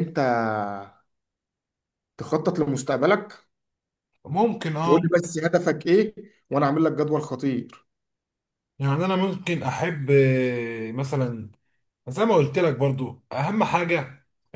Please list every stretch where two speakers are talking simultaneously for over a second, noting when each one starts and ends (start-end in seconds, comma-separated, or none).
none